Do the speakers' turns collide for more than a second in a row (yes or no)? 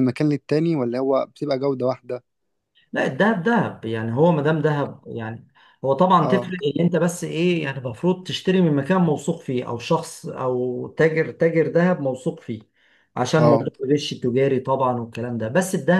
no